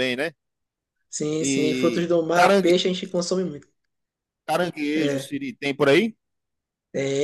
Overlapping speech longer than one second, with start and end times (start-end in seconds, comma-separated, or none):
1.4-2.8